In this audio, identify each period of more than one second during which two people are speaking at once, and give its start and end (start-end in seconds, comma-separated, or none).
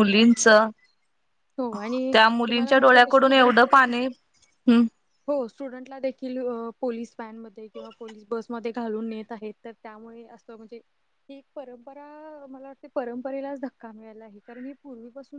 2.1-3.8